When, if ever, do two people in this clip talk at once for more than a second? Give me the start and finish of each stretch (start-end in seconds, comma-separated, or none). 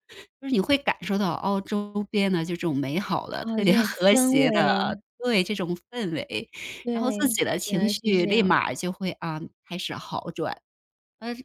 3.4-5.0, 6.9-8.5